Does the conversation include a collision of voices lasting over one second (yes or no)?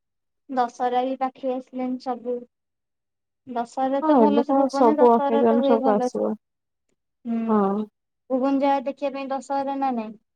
yes